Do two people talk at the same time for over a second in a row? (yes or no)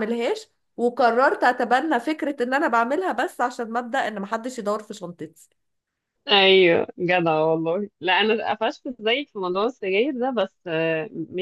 no